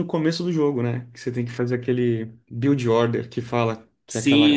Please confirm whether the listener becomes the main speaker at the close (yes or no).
yes